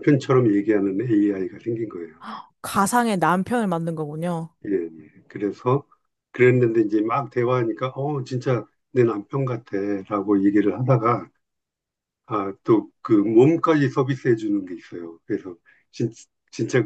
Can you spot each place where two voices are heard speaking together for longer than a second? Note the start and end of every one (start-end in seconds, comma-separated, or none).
none